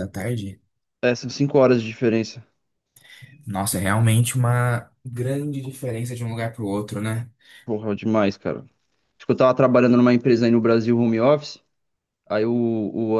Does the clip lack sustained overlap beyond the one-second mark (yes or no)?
yes